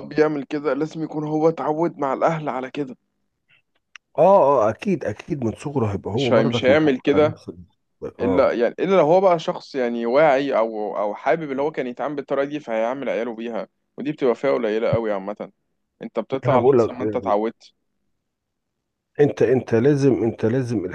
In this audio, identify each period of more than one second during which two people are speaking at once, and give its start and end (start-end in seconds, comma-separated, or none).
6.1-7.4